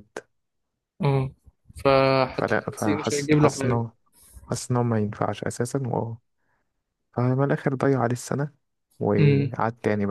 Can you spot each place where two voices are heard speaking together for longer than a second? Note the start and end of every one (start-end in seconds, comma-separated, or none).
2.3-3.8